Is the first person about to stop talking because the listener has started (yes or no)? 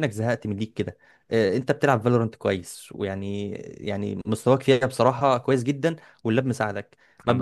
no